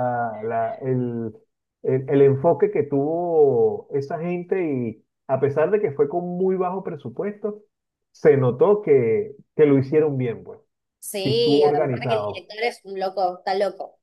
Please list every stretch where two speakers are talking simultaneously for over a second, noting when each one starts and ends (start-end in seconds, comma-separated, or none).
11.2-12.5